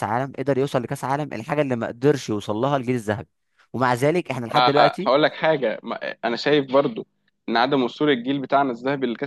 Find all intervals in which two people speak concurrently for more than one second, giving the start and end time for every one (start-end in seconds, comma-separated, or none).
none